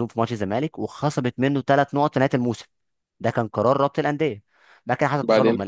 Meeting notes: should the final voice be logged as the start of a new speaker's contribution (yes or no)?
no